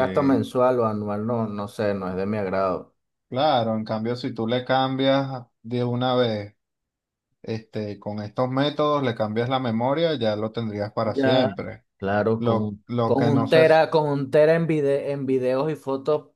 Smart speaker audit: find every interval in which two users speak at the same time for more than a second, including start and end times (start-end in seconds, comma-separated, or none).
12.4-13.8